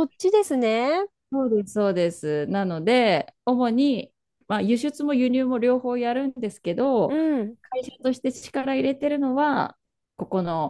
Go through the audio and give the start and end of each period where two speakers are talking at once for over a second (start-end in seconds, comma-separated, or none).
none